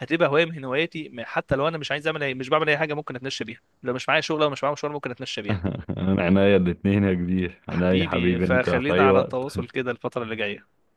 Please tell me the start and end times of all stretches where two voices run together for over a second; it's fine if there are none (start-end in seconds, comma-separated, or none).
7.7-9.4